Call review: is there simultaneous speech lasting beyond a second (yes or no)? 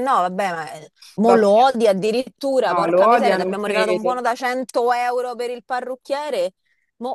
yes